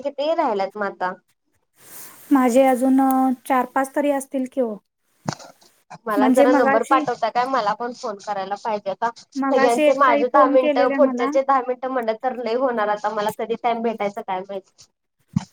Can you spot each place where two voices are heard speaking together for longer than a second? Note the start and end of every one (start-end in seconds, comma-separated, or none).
9.4-11.3